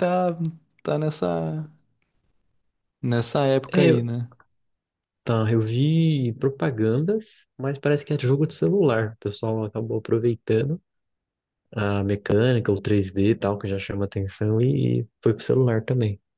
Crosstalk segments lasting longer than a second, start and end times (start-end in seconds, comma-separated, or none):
none